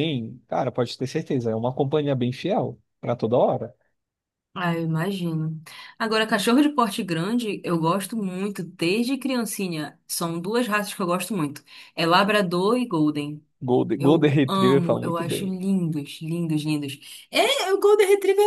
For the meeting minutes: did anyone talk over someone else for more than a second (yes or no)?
yes